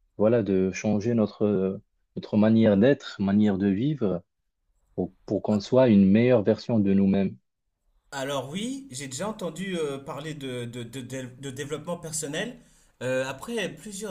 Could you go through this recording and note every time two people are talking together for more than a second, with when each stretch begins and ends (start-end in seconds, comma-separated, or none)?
none